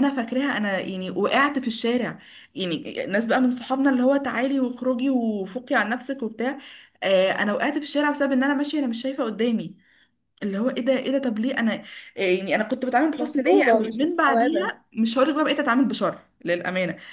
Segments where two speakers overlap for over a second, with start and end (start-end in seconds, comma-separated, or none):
13.2-14.7